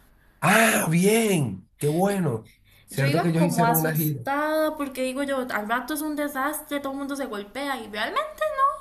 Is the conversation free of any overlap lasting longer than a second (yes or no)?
no